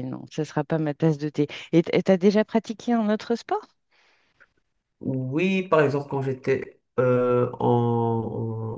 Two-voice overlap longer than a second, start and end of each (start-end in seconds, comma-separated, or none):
none